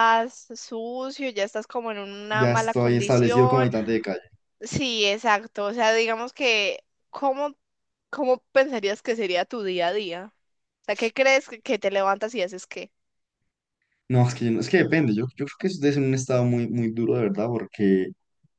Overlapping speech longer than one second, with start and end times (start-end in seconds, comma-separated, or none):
2.3-3.7